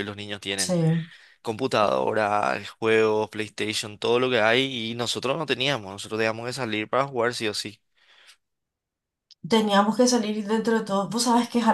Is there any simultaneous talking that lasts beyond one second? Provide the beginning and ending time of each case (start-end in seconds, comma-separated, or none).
none